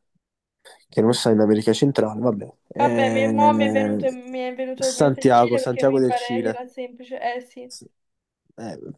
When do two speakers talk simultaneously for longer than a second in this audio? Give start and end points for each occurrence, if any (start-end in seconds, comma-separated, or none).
2.8-4.0, 4.7-6.6